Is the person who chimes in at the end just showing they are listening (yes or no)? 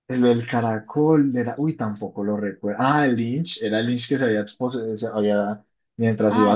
yes